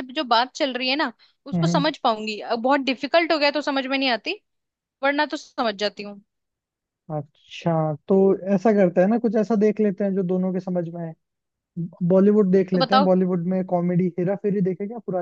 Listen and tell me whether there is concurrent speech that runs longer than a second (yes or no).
no